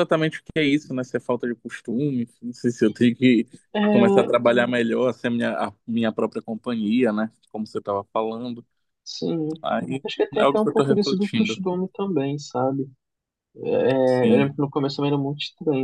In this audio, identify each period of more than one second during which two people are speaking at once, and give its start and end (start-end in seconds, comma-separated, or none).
10.0-11.6